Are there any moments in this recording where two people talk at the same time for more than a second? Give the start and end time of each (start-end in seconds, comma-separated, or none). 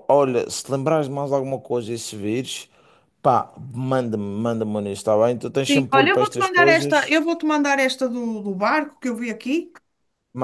5.7-7.2